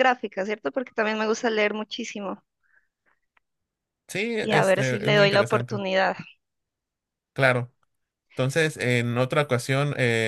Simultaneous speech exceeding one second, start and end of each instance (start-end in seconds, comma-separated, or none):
4.4-5.8